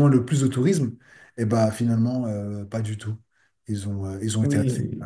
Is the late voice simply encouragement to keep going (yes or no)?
no